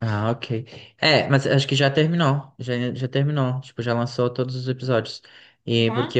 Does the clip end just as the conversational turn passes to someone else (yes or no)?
no